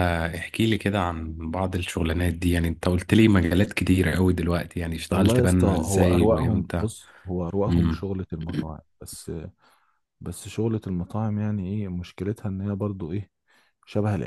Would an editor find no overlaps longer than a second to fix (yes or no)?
no